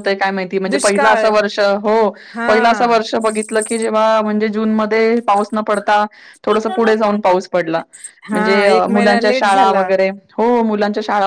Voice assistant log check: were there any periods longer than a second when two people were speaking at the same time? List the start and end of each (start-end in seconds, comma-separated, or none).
8.3-9.9